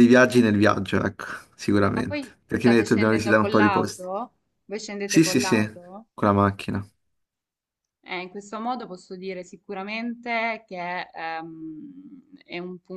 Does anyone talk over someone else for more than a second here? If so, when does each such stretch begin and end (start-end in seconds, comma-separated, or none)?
1.9-4.1